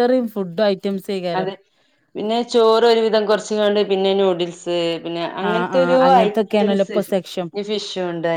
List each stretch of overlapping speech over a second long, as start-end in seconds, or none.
5.5-7.0